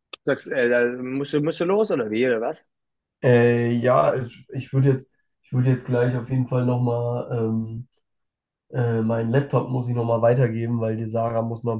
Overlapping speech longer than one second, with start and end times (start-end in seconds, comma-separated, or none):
none